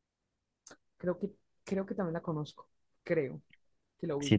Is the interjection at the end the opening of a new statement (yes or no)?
yes